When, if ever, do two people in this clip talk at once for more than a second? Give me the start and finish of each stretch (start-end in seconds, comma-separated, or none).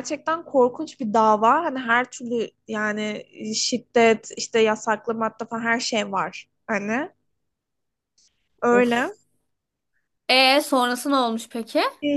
none